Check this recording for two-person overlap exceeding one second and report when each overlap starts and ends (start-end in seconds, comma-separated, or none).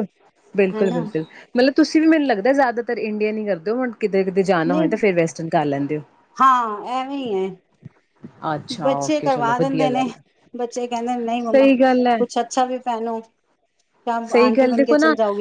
none